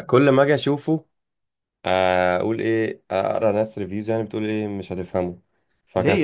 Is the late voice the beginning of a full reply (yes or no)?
yes